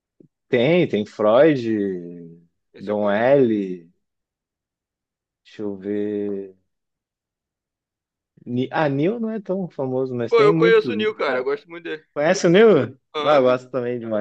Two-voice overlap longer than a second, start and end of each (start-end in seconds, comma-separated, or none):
10.3-11.5